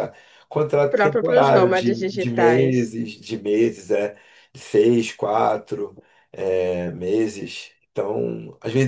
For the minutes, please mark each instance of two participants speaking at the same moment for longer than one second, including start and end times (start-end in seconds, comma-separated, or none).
0.9-3.0